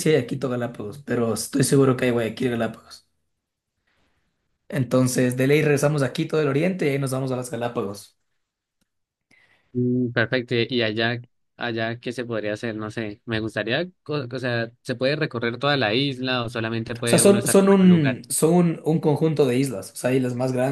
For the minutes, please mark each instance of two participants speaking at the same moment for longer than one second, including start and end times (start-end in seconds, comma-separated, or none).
17.0-18.2